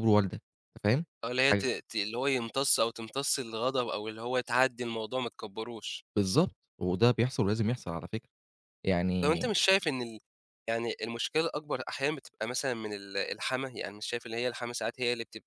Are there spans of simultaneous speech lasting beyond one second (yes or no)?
no